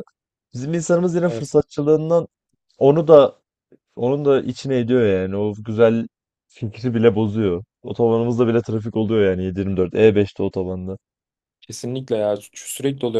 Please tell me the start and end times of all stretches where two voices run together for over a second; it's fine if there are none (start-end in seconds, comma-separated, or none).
none